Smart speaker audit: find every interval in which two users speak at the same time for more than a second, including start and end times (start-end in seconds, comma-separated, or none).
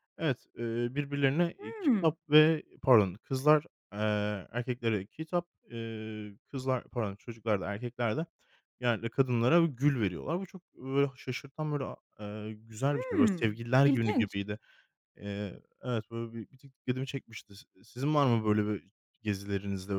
12.9-14.4